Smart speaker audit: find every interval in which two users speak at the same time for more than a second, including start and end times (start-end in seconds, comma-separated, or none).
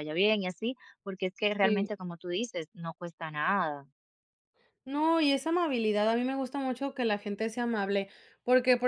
none